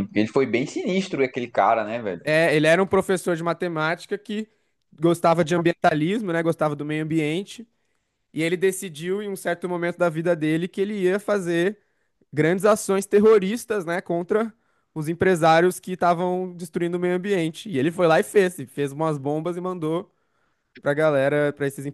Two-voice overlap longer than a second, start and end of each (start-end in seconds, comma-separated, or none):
none